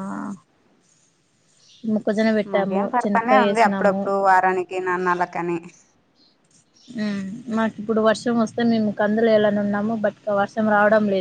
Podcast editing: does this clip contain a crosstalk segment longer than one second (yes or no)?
yes